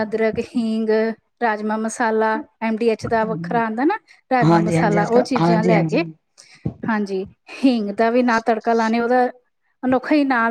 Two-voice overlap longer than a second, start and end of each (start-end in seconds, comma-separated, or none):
4.5-6.0